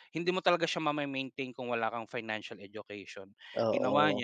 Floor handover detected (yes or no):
no